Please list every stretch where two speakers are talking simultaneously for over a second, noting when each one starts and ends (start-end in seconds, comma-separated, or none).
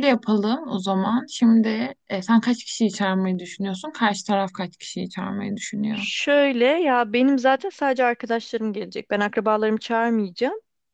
none